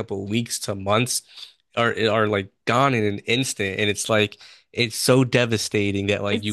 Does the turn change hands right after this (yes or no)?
no